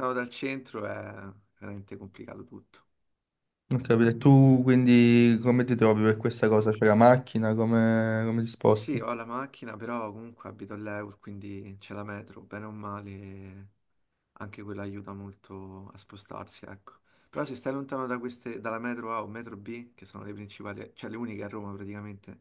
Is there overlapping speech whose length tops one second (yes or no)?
no